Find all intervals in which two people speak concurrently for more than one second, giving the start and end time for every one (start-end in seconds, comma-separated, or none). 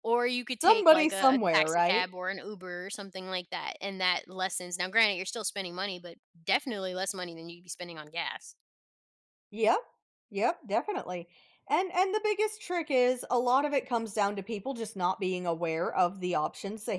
0.6-2.1